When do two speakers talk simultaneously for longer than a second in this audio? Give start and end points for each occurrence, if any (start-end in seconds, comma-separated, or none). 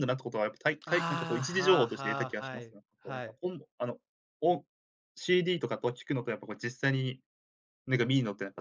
0.9-3.4